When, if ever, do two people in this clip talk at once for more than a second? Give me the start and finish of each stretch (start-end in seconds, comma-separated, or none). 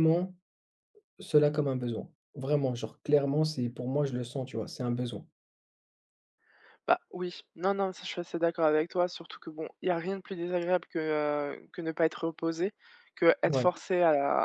none